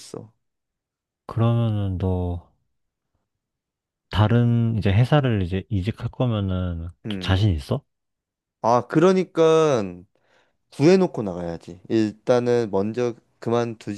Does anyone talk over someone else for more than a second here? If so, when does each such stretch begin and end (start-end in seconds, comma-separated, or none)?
none